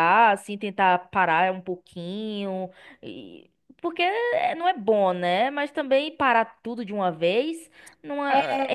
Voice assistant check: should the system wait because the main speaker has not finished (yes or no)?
no